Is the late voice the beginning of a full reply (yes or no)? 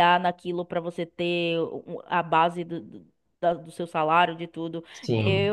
yes